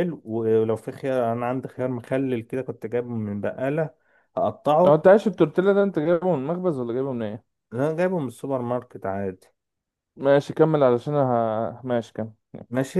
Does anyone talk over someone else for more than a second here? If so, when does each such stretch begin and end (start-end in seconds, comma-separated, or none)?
none